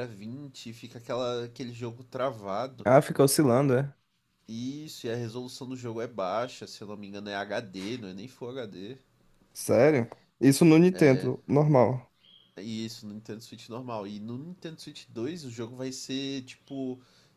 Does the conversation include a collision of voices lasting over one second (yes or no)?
no